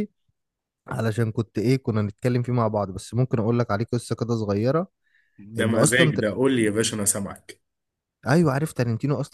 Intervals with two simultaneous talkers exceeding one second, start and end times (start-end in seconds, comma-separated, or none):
5.6-6.8